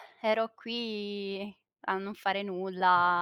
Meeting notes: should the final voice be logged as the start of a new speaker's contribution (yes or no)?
no